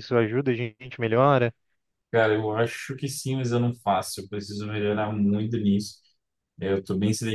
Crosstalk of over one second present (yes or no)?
no